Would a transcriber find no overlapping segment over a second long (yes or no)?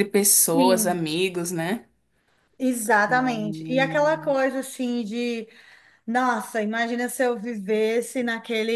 no